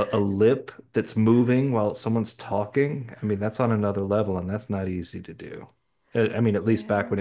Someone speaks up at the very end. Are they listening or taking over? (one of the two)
listening